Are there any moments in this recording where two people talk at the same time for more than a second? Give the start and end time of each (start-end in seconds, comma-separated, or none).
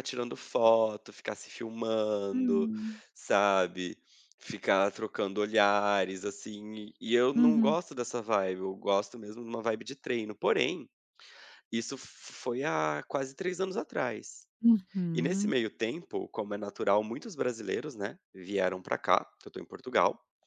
none